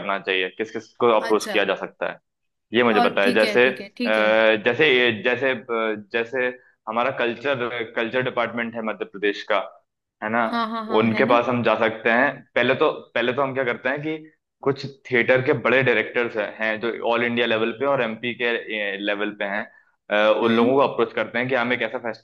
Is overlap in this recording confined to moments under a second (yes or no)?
no